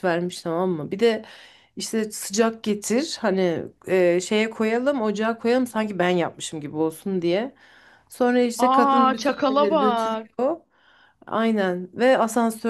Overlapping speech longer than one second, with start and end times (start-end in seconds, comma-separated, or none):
8.6-10.3